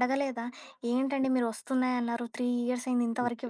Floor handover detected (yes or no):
yes